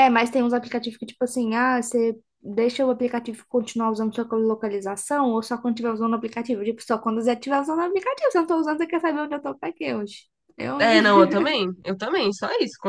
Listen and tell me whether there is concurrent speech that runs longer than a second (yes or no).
no